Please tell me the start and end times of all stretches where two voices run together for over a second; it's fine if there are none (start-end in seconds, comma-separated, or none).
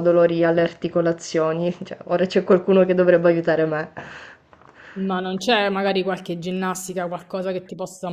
none